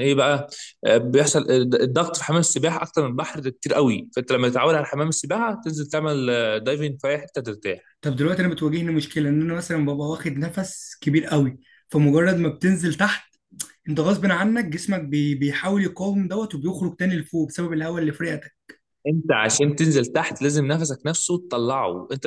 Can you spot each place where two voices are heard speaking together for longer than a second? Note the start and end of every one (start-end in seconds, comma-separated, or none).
none